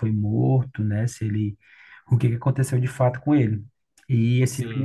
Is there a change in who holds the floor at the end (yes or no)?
no